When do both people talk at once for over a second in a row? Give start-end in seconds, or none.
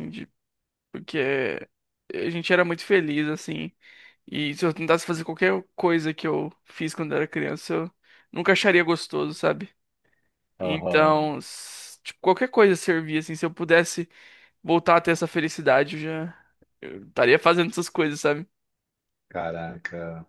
none